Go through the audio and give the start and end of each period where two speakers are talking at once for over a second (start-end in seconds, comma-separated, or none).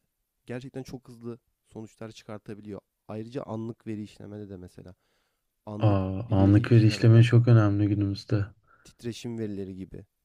5.8-7.2